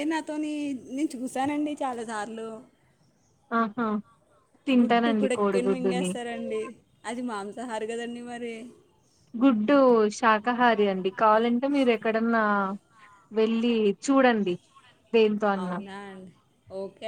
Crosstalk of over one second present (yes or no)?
yes